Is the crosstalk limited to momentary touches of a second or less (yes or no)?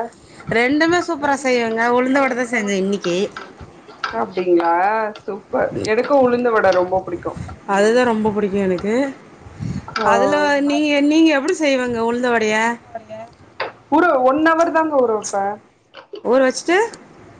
no